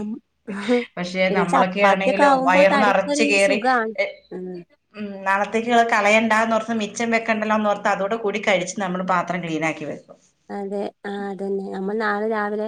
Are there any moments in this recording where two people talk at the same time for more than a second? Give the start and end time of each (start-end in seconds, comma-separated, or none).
1.3-3.6